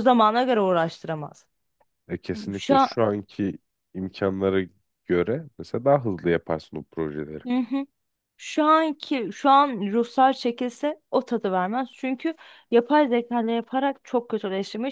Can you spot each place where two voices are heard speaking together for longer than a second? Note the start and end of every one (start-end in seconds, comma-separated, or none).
none